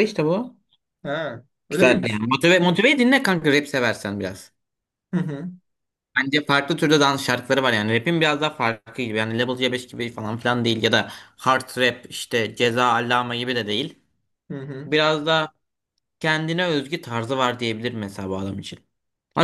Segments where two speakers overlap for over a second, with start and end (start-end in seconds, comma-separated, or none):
none